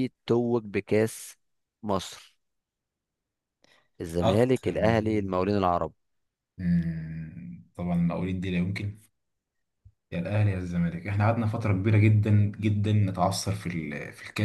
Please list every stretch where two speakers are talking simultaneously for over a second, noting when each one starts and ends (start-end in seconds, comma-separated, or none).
4.2-5.5